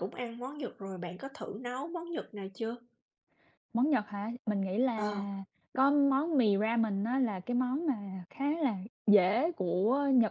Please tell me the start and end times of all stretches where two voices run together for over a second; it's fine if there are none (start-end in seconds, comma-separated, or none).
none